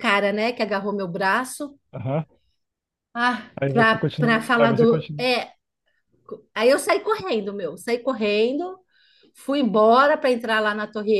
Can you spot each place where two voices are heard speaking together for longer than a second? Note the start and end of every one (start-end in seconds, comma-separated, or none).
3.6-5.3